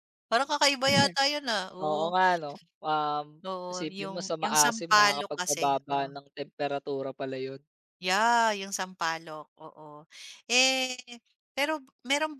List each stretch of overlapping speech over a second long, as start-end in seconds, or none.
3.7-5.7